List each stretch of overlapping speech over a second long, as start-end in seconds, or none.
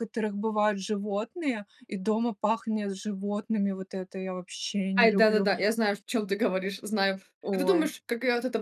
none